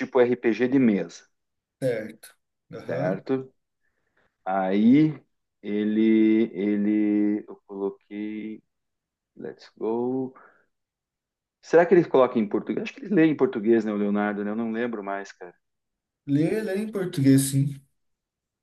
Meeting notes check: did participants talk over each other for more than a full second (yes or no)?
no